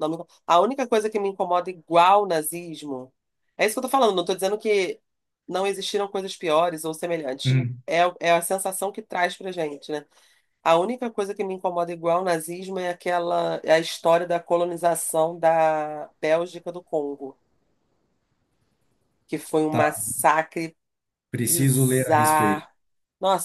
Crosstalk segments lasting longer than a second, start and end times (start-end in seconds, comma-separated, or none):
21.5-22.7